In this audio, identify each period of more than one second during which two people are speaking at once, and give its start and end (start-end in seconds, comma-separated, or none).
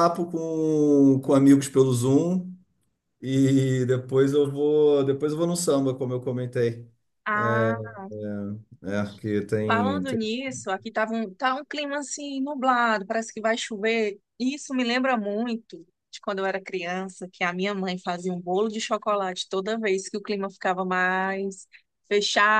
none